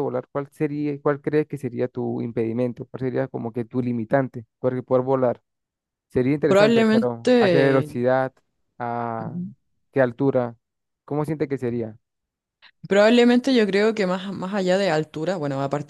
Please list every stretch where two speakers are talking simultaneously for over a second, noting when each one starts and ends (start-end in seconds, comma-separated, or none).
6.5-7.9